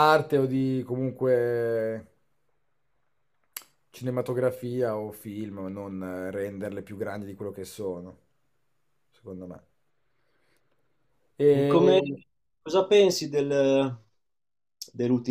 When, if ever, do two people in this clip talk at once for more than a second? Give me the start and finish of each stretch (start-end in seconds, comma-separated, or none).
none